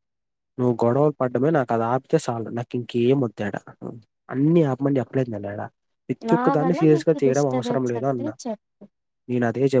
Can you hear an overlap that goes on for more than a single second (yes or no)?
yes